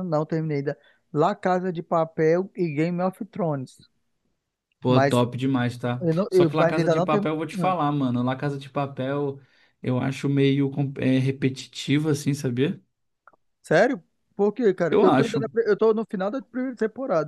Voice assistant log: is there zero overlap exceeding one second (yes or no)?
no